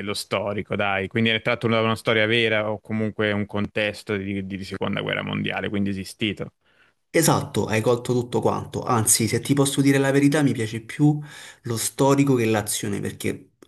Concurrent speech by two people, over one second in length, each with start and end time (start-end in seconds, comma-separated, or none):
none